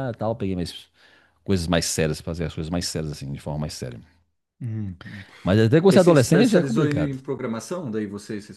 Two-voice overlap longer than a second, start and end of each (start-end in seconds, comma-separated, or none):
5.9-7.2